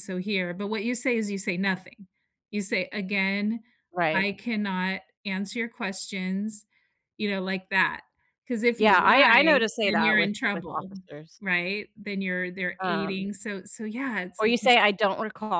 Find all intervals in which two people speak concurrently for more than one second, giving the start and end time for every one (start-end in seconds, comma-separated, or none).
8.8-10.9